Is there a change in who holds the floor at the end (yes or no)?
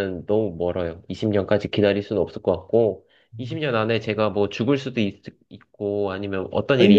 yes